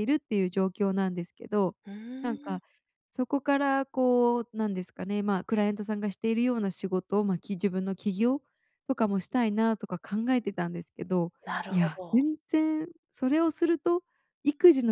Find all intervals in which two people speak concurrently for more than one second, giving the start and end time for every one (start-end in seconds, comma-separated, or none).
none